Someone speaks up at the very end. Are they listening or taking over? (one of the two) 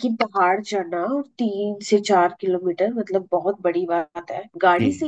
listening